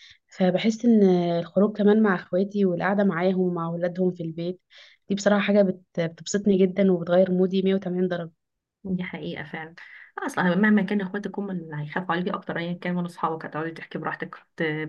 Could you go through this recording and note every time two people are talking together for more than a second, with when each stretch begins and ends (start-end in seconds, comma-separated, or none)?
none